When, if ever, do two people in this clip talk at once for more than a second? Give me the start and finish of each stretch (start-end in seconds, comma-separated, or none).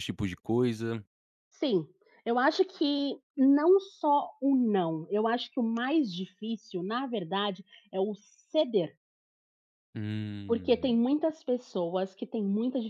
none